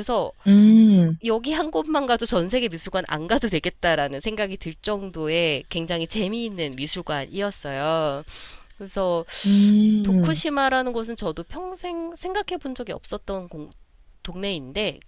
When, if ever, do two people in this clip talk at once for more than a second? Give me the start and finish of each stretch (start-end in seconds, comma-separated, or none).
none